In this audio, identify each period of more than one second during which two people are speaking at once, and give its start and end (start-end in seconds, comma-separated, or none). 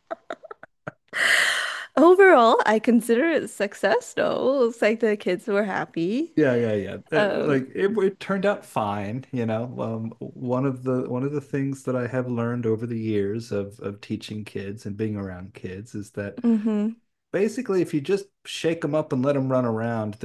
none